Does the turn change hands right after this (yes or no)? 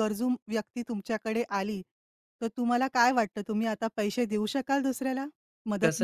yes